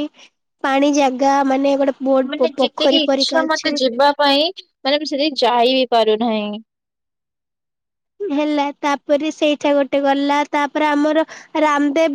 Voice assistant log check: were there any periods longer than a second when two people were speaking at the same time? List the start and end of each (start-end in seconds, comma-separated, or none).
2.3-3.7